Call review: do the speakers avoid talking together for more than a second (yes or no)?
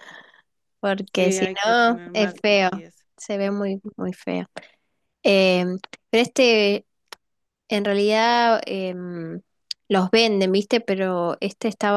no